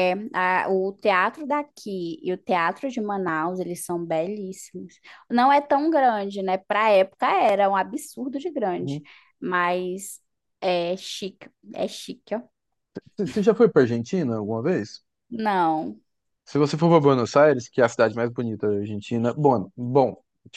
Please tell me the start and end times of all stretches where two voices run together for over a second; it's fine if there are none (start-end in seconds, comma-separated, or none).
none